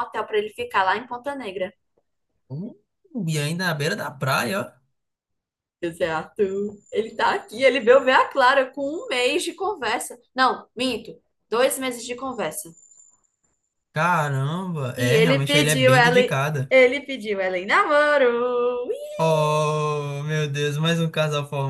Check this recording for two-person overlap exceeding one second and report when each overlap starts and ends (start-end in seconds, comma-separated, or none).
15.0-16.7